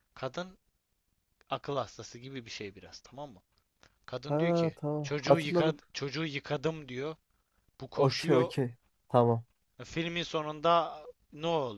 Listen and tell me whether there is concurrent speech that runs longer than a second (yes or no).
yes